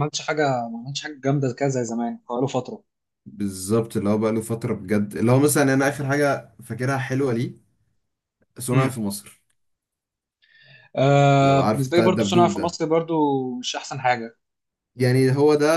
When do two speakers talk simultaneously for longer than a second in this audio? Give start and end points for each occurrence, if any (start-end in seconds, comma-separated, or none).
11.4-12.8